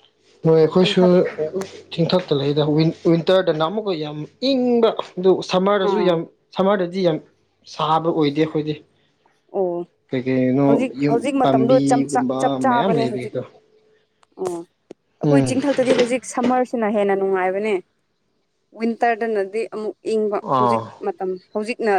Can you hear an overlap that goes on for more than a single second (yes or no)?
yes